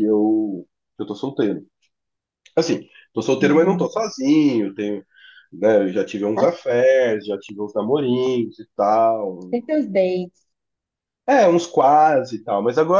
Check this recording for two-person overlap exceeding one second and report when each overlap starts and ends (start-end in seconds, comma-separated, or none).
none